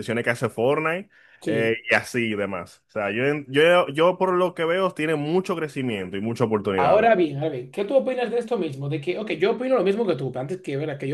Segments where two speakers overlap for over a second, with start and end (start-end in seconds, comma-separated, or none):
none